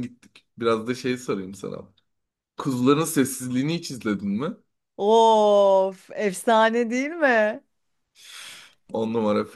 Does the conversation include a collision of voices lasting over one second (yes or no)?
no